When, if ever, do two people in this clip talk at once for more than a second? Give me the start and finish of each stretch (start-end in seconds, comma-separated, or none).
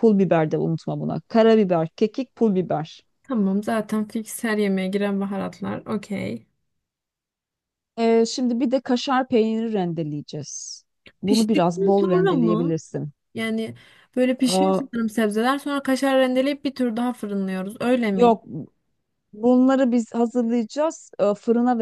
11.2-12.8